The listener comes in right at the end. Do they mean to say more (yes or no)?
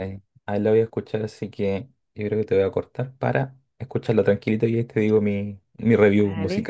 yes